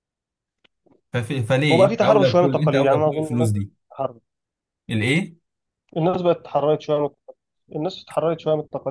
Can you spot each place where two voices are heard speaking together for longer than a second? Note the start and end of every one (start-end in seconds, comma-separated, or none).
1.7-3.7